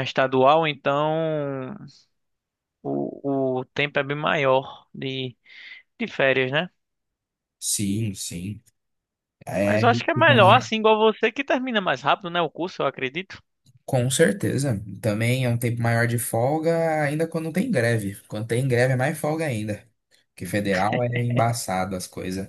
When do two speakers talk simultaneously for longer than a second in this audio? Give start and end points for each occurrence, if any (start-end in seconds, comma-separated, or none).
none